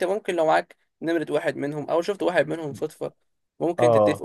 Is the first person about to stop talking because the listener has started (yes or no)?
no